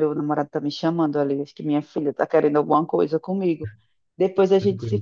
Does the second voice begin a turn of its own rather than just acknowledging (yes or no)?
no